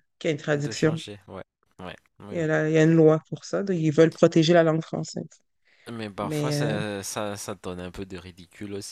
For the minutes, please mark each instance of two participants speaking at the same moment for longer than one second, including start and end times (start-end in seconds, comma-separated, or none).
none